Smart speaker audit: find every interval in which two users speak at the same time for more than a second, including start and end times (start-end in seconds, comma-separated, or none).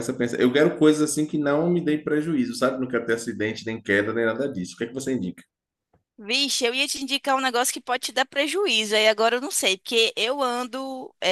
none